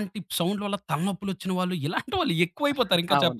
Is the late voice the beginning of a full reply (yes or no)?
yes